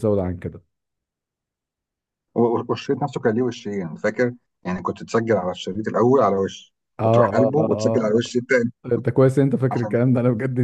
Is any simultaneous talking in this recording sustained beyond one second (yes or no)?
yes